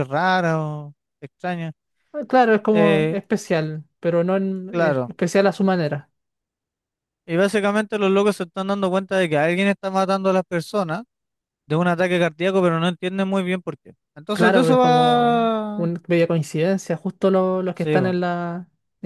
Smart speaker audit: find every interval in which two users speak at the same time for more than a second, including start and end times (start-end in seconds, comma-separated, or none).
14.3-15.9